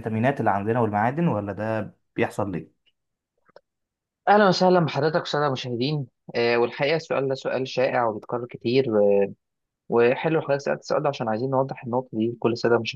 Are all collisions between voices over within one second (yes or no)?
yes